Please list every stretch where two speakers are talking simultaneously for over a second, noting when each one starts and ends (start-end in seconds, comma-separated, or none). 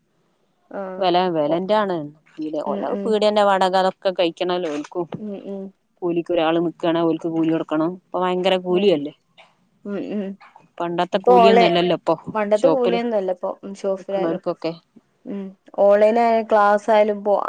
none